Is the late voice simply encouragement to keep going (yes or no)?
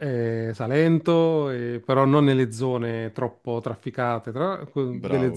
no